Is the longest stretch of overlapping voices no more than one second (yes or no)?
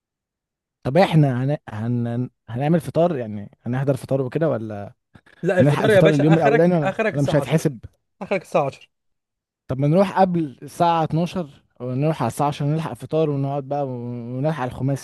no